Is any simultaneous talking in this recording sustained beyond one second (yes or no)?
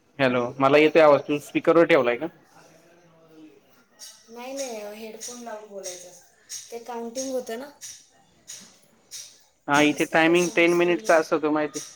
yes